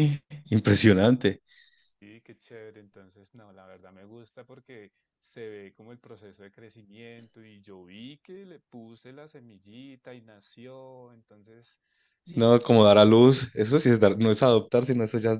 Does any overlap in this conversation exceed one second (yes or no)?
yes